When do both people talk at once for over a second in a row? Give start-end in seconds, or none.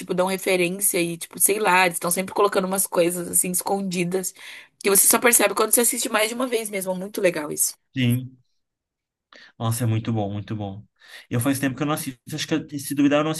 none